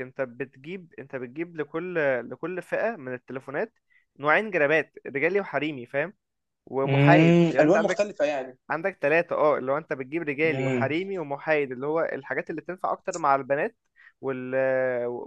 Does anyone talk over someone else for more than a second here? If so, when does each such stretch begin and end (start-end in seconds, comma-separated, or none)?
6.8-8.1